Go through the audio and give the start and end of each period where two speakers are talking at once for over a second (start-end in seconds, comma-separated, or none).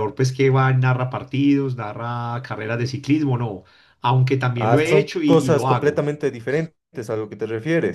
4.6-6.0